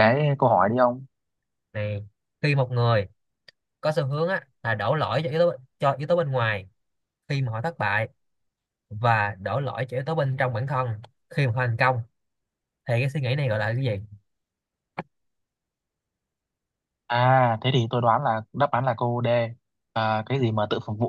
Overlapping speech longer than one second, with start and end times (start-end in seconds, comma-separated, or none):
none